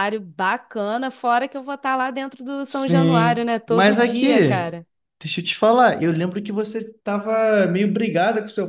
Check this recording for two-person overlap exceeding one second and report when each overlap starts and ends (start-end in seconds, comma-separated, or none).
2.6-4.7